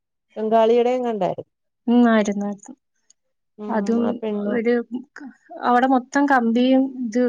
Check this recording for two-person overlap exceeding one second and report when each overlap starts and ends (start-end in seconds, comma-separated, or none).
none